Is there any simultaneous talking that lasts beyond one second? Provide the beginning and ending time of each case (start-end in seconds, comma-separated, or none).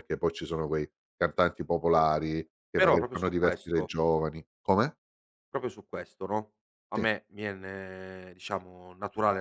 2.8-4.0